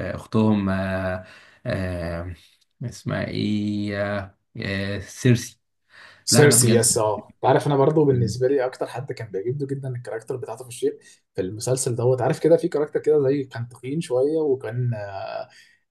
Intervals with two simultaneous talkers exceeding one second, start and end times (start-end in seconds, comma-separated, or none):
none